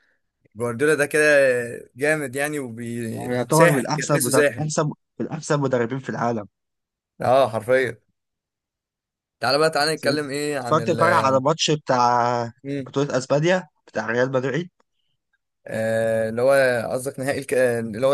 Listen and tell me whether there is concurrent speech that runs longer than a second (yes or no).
yes